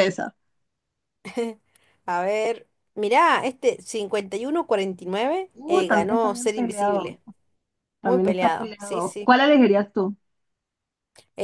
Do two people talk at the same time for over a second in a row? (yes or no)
yes